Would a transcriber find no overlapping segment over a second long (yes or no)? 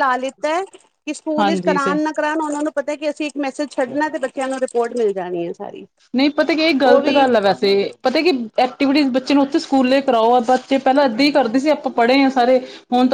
yes